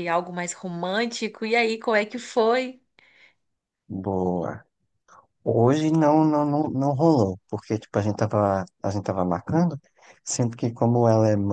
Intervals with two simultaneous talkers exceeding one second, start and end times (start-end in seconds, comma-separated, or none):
none